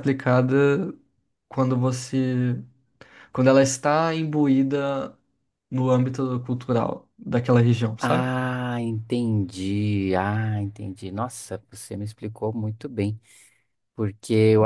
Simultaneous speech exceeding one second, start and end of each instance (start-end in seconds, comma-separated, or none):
none